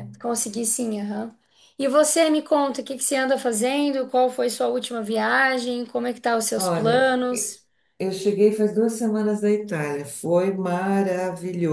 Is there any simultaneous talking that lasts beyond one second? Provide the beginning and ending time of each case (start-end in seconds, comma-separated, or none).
none